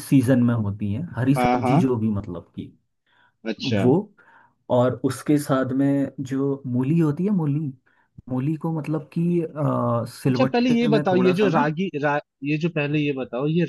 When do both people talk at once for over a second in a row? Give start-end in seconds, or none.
10.3-11.7